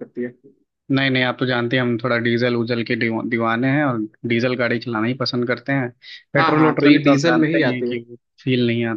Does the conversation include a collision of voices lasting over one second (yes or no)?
yes